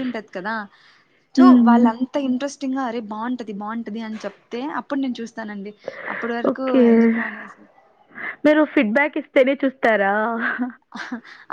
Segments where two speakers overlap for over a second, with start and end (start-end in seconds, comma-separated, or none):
none